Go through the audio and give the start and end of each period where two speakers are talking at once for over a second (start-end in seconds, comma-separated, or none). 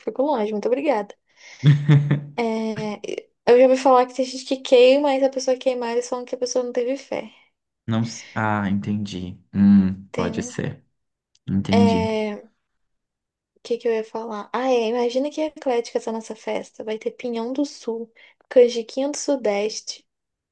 none